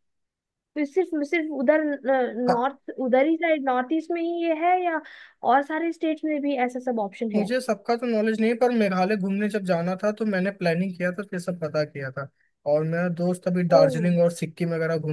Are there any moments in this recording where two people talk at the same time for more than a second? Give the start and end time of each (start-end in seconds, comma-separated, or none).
none